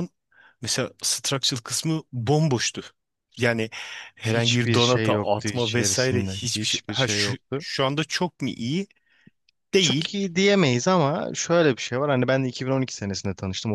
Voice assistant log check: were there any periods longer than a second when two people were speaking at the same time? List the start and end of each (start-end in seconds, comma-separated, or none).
4.2-7.7